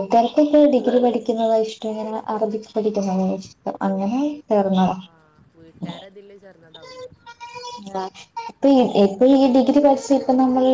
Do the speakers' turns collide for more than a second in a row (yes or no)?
no